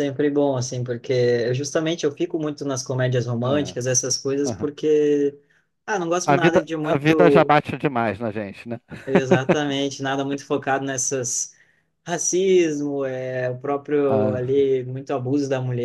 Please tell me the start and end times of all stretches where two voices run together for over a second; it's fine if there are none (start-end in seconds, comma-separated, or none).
6.2-7.5